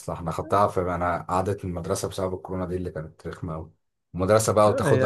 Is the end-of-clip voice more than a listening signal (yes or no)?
no